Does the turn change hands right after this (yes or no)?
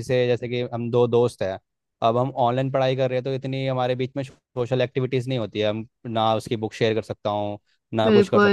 no